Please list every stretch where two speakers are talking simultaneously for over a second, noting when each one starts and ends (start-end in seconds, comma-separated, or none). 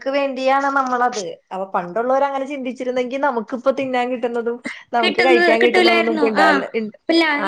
5.0-6.4